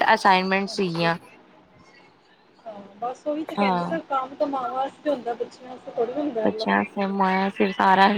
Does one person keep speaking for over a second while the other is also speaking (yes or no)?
no